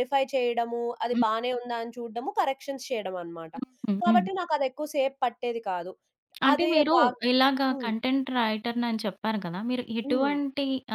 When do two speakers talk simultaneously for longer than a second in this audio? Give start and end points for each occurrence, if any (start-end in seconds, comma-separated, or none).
none